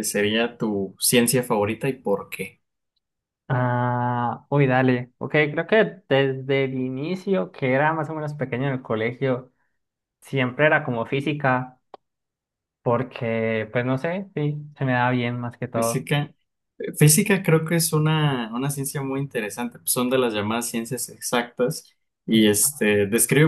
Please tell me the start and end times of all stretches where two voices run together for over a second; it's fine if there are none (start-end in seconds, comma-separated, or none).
none